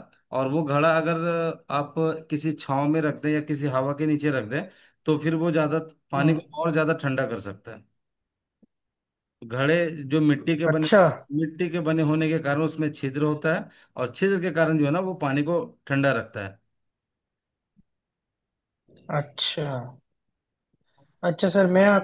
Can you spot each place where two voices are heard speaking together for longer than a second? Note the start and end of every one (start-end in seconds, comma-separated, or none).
none